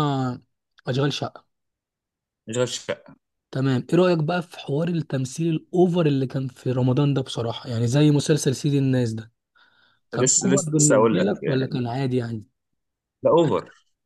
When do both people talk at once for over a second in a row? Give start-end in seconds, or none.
10.1-11.8